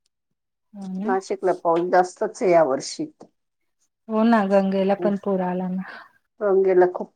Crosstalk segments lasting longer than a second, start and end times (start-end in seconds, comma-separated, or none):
none